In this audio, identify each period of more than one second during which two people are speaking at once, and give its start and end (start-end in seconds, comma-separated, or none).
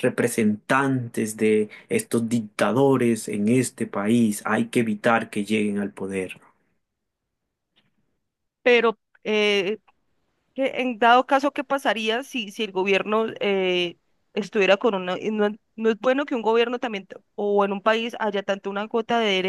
none